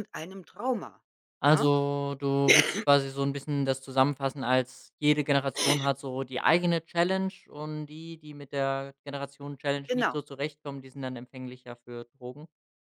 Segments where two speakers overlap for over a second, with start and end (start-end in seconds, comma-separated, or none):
none